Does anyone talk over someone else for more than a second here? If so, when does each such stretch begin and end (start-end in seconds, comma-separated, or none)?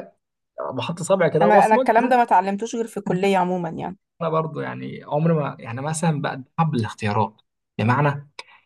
none